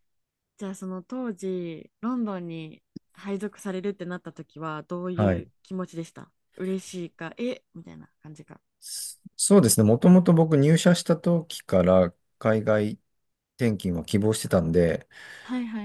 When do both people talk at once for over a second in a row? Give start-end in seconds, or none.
none